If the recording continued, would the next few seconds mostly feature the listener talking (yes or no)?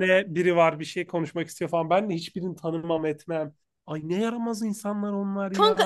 yes